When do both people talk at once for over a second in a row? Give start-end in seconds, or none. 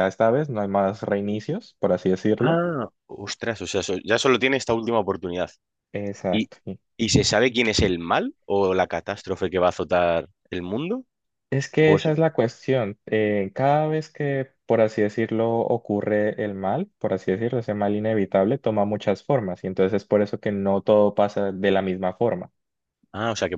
none